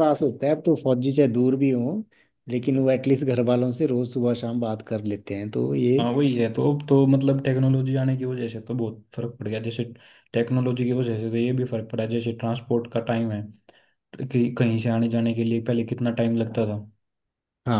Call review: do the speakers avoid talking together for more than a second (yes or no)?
yes